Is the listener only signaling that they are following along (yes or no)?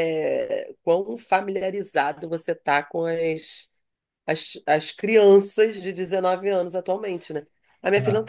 yes